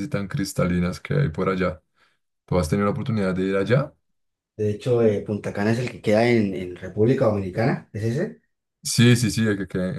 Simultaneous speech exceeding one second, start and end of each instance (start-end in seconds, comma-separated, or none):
none